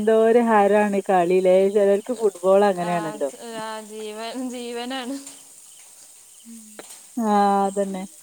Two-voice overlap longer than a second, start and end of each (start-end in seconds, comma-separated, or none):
none